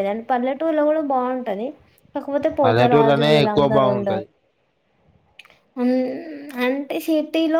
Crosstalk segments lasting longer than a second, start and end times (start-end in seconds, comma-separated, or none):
2.6-4.2